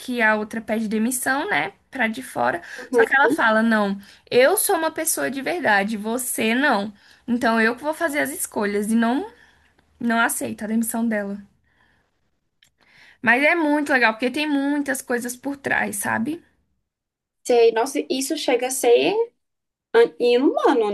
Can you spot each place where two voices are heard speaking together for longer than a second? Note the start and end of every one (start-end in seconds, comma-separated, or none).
none